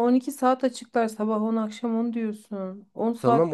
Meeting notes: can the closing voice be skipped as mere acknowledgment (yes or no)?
no